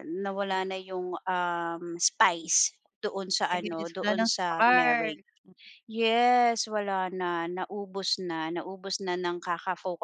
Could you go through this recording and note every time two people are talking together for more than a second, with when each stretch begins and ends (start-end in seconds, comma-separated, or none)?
3.5-5.1